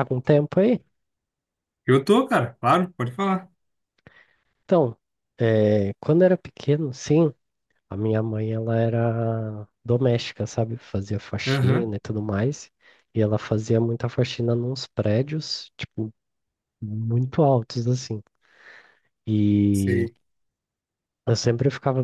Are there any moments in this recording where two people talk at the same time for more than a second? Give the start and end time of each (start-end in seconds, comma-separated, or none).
none